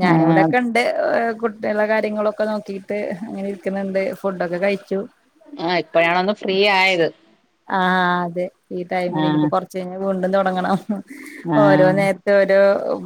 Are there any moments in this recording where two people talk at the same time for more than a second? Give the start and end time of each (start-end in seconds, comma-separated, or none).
none